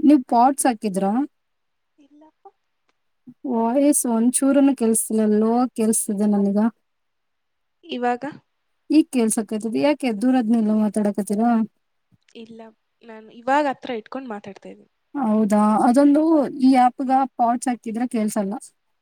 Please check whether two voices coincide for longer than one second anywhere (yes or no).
no